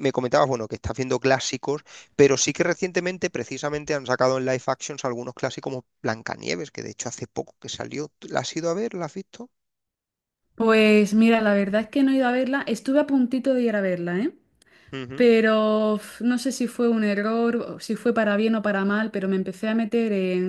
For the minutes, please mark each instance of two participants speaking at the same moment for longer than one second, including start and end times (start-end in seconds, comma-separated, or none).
none